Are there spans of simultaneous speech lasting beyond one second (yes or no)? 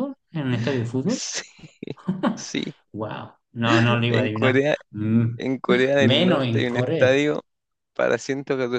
yes